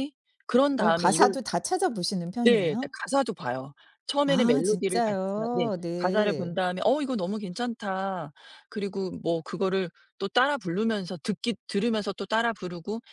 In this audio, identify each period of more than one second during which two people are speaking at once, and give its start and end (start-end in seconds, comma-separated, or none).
4.2-6.6